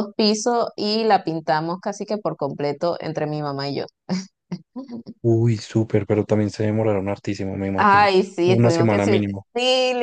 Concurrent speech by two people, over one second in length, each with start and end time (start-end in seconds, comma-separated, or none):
7.8-9.1